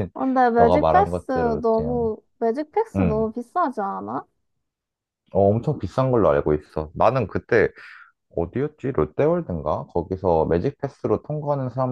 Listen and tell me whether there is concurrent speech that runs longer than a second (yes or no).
yes